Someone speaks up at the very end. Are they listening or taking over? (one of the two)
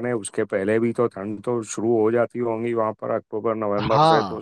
taking over